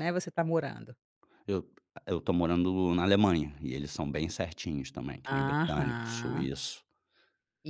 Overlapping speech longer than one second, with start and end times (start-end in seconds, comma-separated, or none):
5.2-6.5